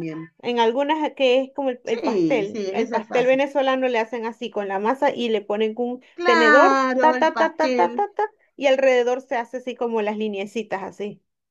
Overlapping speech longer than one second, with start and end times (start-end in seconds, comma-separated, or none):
1.8-3.5, 6.1-8.0